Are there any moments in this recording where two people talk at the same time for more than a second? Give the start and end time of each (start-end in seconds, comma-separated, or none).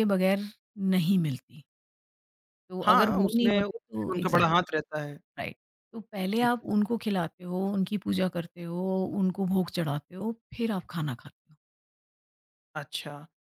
2.8-4.5